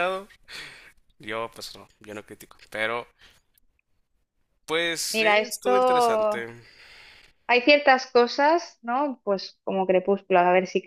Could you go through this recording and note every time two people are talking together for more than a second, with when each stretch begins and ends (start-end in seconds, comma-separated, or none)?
5.1-6.5